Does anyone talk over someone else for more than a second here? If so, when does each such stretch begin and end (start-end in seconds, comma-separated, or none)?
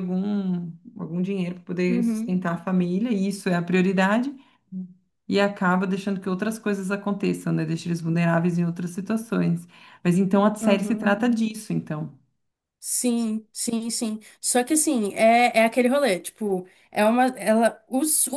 none